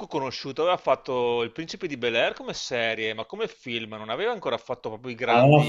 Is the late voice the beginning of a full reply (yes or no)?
yes